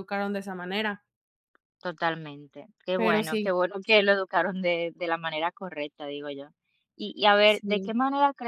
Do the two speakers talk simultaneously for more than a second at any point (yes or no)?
no